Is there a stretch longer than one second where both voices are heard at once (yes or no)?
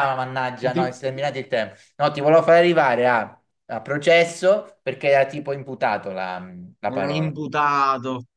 no